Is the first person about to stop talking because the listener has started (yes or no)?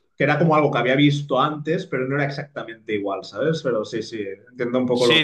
yes